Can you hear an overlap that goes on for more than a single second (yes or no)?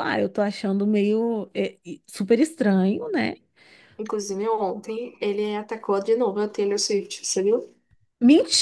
no